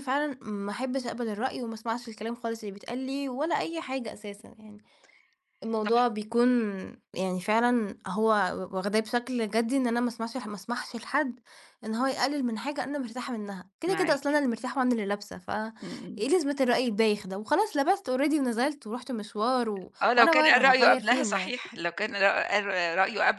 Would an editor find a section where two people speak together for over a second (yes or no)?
yes